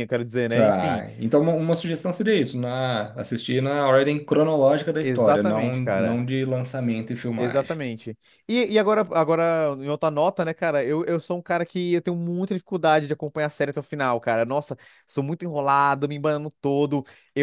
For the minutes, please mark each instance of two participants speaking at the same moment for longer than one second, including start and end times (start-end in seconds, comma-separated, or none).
5.0-6.2